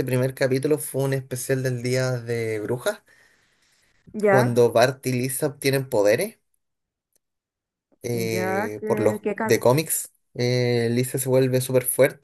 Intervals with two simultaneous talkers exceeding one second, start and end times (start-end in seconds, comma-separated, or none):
8.3-9.6